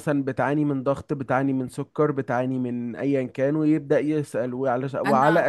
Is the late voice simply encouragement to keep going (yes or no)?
yes